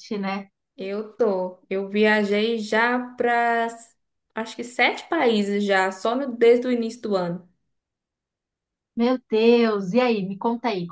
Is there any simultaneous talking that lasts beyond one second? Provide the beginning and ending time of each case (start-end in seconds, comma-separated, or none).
none